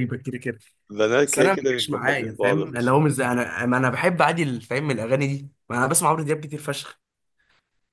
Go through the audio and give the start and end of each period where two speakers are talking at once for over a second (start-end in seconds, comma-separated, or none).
1.2-2.6